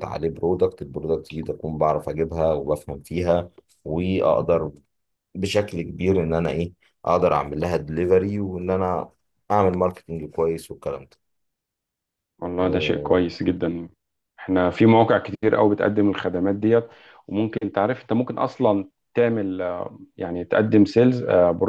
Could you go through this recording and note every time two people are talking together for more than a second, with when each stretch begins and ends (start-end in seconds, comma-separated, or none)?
none